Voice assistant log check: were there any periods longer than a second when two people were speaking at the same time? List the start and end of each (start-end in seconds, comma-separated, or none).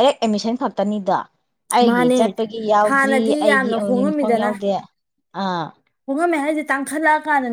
2.9-4.5